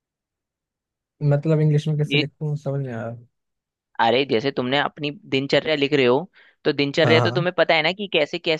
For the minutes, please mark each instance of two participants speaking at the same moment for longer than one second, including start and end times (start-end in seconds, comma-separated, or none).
none